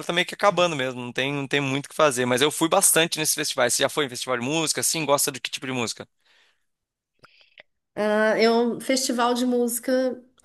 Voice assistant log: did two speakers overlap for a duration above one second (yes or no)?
no